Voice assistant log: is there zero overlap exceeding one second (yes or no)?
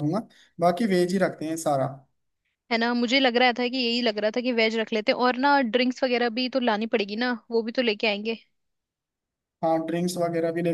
yes